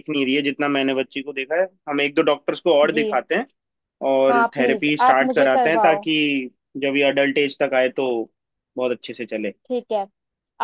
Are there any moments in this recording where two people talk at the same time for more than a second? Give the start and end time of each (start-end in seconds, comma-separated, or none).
4.3-6.1